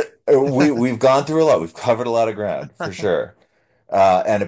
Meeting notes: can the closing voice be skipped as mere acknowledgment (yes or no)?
yes